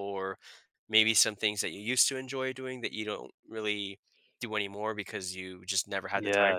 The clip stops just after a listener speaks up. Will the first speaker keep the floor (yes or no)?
no